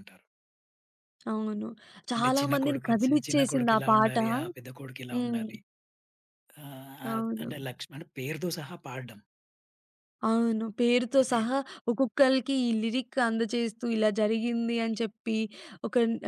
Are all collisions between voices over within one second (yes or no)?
no